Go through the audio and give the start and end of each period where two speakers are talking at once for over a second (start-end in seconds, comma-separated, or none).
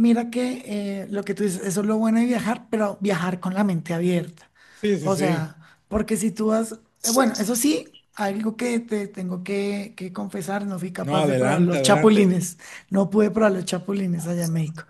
11.0-12.3